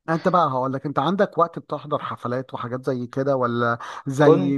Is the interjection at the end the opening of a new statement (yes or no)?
no